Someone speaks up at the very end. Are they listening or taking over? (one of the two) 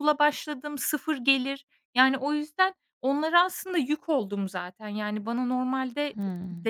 listening